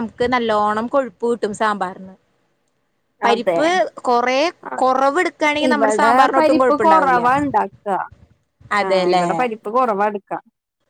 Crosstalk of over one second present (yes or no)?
yes